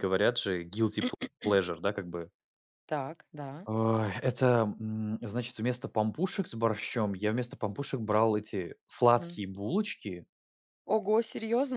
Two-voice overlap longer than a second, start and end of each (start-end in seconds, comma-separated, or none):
none